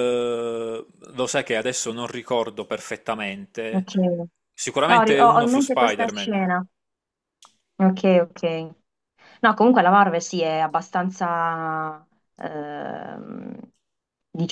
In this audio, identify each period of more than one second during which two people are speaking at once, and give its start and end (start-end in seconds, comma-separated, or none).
4.9-6.5